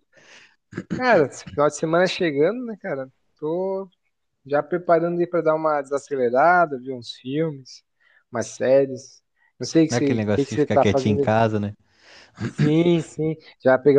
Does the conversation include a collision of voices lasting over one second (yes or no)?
yes